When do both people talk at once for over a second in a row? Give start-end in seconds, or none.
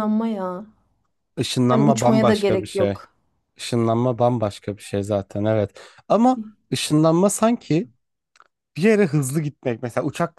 1.7-3.0